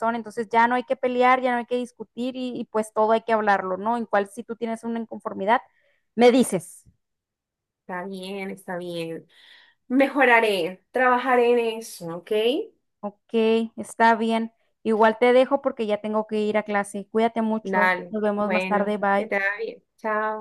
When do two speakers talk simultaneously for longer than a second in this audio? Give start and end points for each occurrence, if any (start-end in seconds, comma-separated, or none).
17.6-19.3